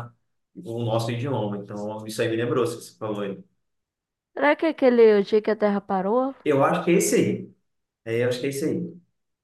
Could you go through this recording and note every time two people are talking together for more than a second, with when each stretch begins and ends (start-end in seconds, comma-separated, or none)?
none